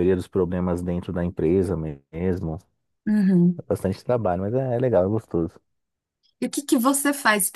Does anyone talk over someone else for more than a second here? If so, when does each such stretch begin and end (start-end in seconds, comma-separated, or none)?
none